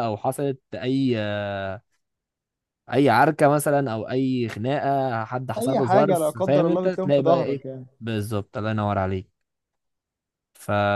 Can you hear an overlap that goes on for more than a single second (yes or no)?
yes